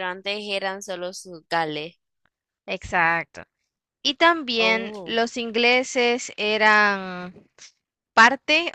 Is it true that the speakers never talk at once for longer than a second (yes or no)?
yes